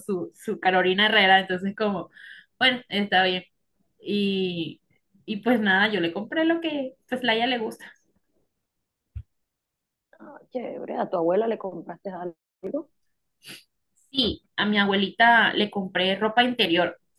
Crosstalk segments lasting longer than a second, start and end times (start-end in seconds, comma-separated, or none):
none